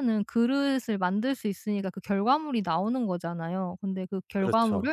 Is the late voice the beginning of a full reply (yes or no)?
no